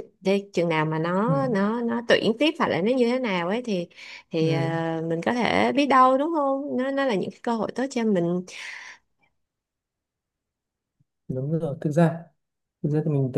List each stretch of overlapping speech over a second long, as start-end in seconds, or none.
none